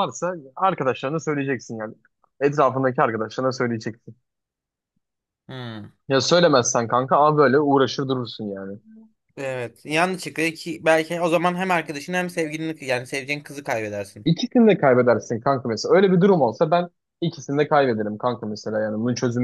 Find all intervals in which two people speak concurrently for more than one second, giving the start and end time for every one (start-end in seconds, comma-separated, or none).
none